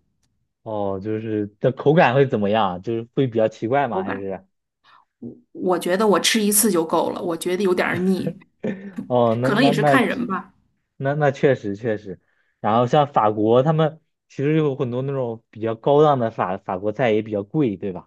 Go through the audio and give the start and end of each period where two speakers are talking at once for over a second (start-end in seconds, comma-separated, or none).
none